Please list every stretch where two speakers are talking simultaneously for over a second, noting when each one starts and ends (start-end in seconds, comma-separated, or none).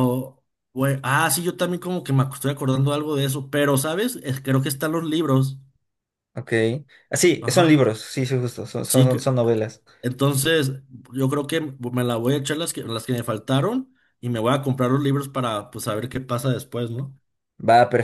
none